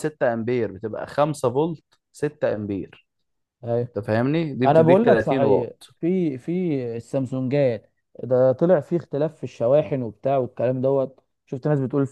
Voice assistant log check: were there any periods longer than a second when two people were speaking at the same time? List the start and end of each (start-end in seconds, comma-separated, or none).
4.7-5.9